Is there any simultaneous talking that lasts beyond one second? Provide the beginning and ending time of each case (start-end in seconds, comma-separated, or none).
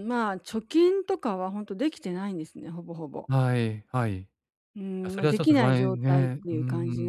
5.0-6.6